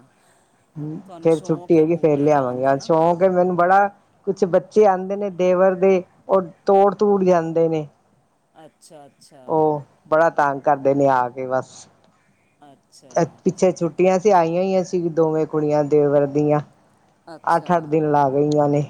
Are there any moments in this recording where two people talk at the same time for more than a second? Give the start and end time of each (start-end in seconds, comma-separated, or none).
1.1-2.9